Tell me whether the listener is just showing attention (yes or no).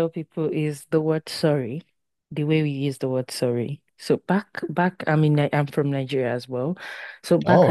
yes